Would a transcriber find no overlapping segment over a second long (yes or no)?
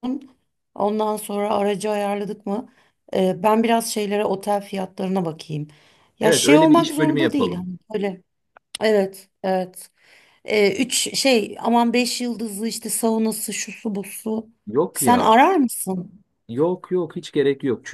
no